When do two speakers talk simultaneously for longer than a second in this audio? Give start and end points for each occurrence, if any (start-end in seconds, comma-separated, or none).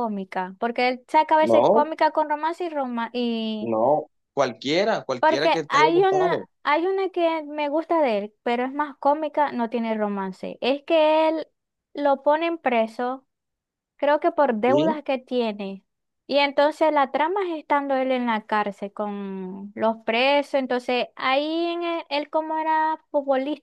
5.2-6.5